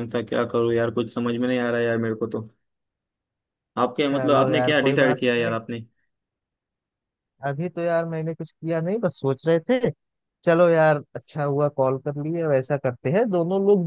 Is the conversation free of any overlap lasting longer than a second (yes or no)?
no